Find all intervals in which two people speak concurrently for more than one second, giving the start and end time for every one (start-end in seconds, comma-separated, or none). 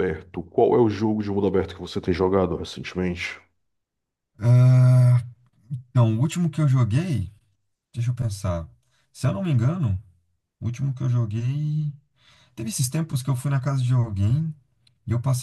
none